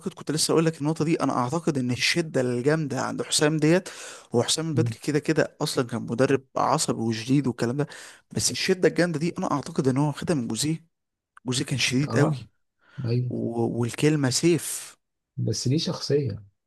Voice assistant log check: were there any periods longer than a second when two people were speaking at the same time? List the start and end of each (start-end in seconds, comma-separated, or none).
none